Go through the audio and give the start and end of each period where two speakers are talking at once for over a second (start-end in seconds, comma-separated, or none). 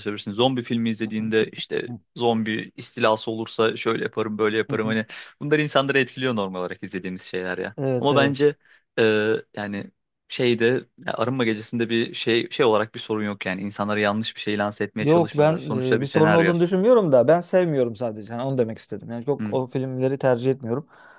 15.0-16.5